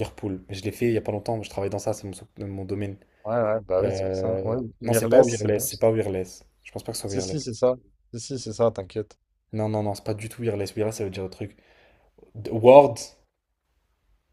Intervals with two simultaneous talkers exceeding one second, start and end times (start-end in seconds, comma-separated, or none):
3.8-5.7